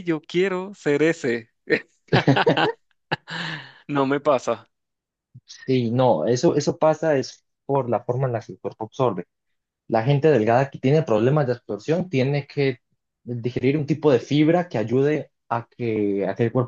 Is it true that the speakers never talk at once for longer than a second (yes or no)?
yes